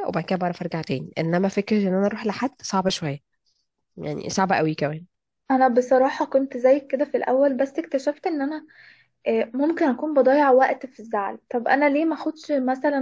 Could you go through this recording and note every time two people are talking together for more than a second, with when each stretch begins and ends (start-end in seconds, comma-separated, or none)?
none